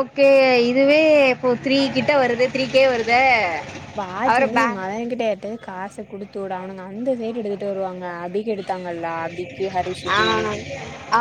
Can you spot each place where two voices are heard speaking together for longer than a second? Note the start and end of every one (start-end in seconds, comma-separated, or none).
none